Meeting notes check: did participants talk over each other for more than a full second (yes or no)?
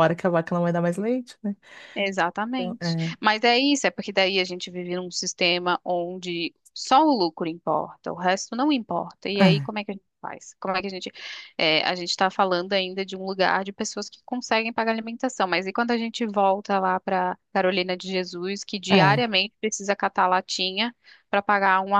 no